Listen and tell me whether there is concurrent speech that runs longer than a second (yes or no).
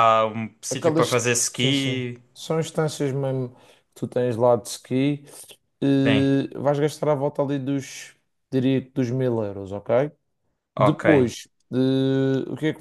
yes